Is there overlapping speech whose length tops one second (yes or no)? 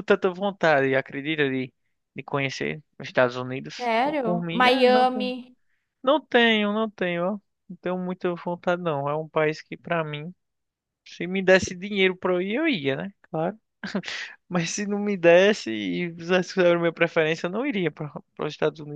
yes